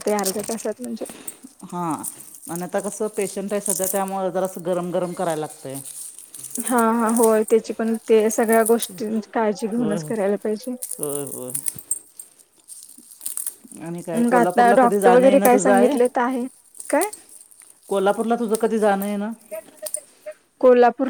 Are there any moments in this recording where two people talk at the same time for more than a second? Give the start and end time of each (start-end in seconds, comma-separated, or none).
14.2-15.9